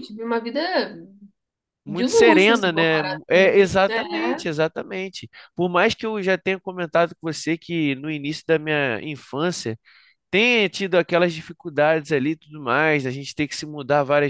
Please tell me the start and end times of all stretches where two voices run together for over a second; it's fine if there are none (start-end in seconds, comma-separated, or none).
1.9-4.4